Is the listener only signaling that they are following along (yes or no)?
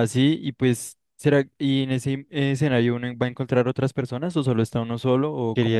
no